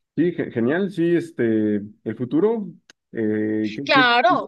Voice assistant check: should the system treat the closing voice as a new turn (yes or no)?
yes